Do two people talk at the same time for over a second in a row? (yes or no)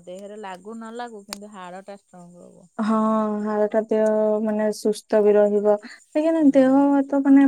no